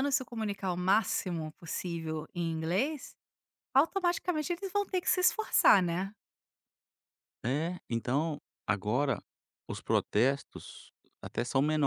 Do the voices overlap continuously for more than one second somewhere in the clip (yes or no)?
no